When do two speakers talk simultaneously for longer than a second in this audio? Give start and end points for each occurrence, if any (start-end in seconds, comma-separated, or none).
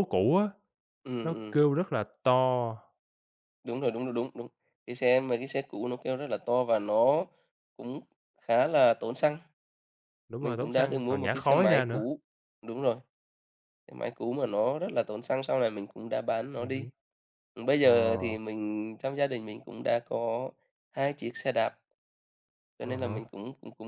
10.4-12.0